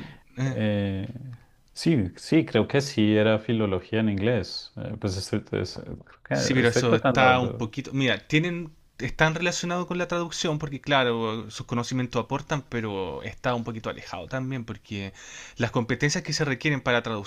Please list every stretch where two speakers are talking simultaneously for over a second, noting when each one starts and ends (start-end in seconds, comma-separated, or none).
6.3-7.7